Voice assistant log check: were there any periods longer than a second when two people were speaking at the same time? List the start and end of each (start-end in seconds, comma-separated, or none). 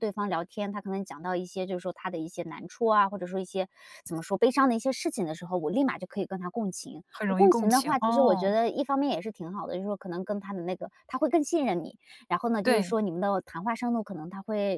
7.1-8.6